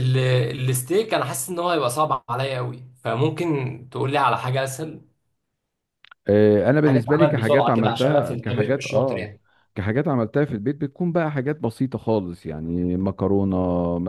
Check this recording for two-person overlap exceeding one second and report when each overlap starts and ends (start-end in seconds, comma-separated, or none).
6.9-9.3